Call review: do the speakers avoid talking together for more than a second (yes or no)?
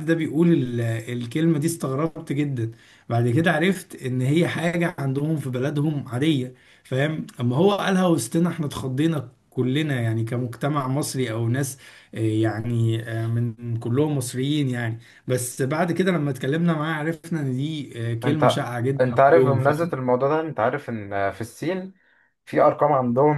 no